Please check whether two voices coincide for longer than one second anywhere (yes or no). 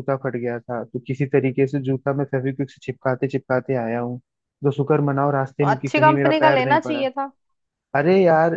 yes